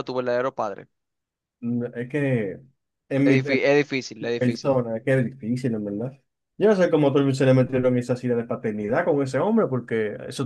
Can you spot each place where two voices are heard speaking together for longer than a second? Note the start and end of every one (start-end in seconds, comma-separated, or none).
none